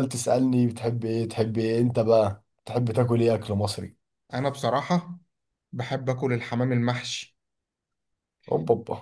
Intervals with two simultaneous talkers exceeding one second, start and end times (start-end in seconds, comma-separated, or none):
none